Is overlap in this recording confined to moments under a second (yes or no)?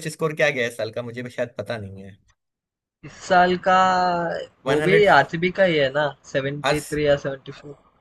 yes